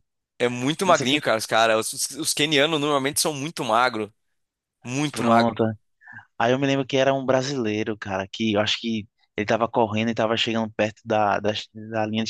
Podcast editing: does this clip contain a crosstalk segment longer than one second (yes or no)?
no